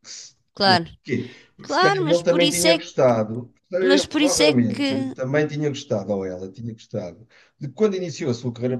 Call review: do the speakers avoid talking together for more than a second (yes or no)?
no